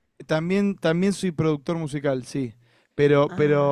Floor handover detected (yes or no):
no